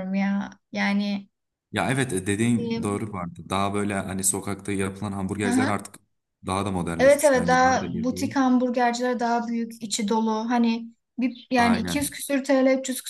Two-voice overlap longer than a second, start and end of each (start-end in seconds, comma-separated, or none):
7.0-8.3